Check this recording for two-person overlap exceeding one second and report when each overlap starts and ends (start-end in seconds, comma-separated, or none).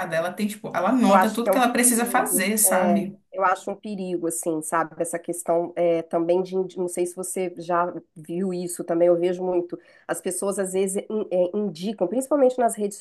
1.0-3.2